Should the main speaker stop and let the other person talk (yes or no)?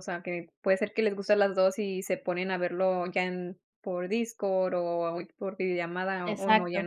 yes